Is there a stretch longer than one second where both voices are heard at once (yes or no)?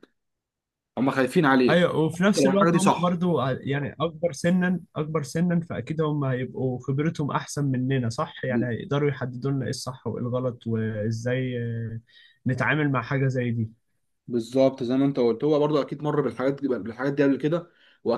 yes